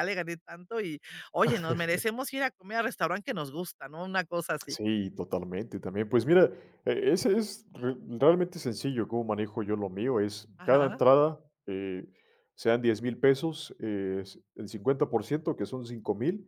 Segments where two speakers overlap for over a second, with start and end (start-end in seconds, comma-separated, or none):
none